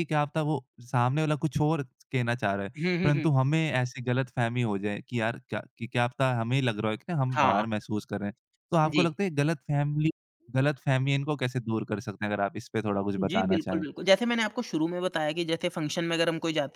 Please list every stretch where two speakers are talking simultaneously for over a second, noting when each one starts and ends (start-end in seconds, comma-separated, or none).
none